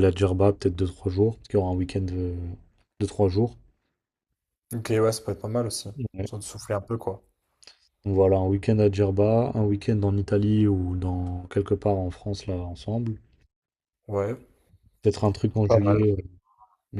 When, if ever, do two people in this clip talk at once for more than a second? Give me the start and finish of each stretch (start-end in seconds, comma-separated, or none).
none